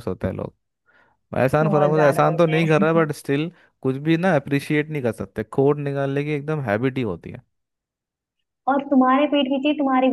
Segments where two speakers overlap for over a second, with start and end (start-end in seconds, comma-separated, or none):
1.6-2.9